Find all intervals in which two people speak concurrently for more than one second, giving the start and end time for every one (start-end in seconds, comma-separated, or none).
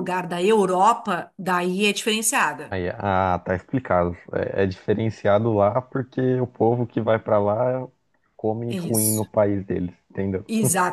none